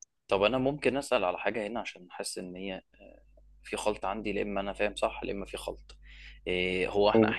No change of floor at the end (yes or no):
yes